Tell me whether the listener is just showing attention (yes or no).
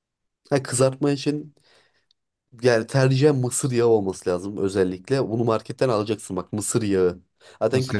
yes